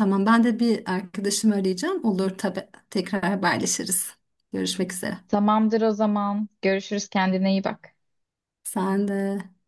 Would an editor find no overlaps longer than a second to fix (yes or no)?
yes